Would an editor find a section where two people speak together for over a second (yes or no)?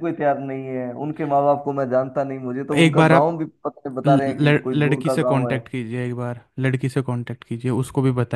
yes